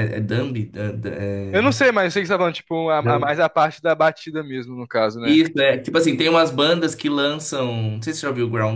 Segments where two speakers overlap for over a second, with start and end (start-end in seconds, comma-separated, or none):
none